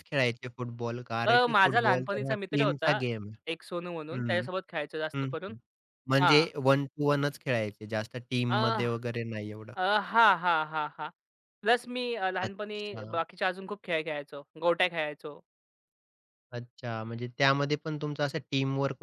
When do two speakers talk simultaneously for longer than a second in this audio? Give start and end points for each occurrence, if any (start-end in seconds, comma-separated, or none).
1.3-3.0